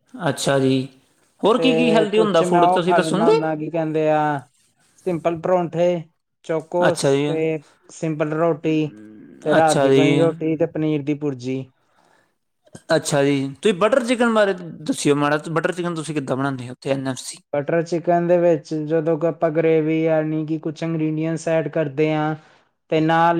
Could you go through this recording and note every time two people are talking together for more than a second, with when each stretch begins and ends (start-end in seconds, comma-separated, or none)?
1.6-3.4